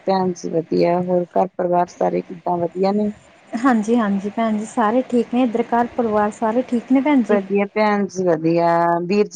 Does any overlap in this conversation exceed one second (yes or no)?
no